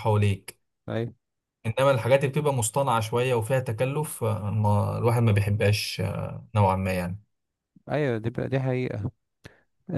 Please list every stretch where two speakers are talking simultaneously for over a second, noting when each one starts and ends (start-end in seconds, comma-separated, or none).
none